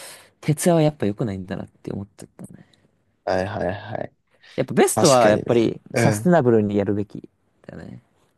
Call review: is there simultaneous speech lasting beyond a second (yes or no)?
yes